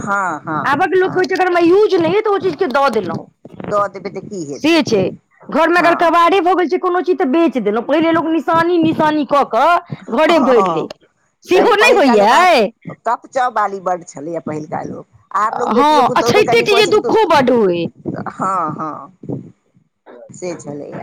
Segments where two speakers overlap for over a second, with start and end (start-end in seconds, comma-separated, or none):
15.8-17.9